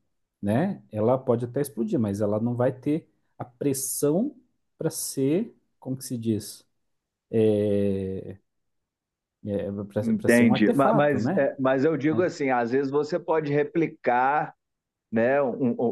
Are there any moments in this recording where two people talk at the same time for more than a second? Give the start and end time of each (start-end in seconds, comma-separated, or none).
10.2-11.5